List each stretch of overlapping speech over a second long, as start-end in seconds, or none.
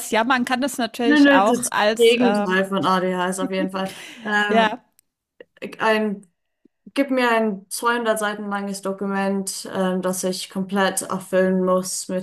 1.0-2.5